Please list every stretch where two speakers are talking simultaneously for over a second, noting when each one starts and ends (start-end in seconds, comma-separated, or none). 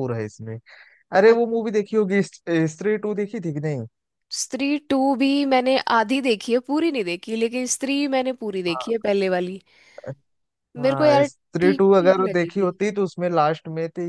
10.8-12.7